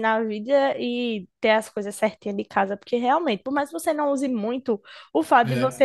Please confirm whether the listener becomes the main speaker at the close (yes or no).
no